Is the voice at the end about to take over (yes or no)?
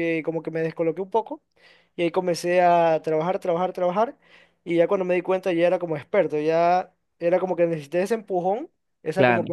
no